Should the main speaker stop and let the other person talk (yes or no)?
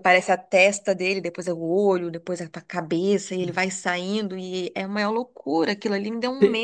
yes